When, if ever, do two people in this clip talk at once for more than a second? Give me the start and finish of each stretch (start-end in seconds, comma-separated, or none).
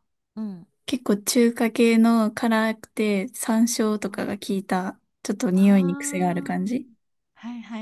5.5-6.9